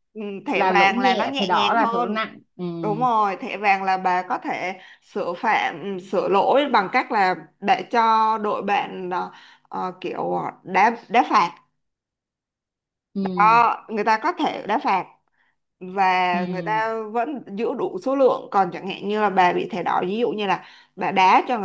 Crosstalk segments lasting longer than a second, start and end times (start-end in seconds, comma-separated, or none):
0.5-2.3